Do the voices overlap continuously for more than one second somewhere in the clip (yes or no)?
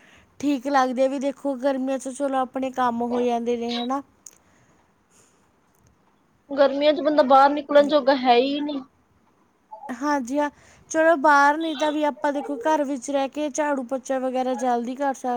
no